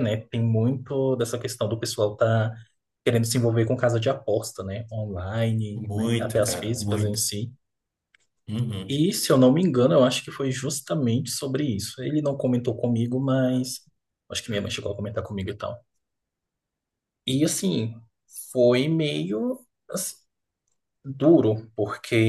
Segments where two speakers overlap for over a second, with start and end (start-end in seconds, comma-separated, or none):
5.7-7.2